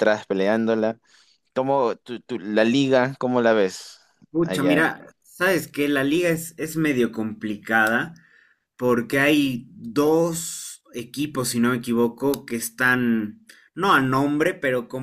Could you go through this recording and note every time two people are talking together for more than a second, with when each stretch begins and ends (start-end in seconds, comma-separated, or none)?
none